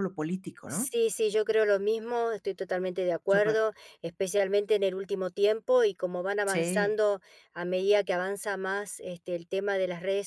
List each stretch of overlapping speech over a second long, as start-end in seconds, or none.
none